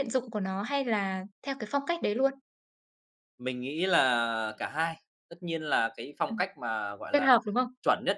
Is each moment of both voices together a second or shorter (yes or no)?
yes